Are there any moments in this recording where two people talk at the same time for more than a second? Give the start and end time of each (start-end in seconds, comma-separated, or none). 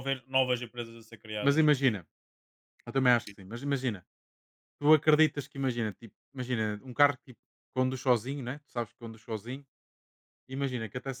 none